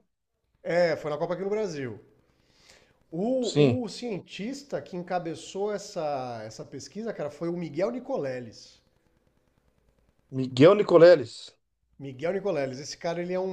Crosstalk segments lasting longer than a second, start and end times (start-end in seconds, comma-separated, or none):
none